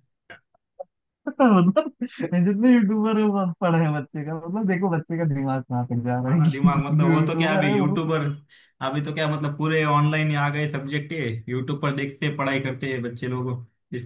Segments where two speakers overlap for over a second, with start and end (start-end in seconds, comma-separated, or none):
6.2-8.0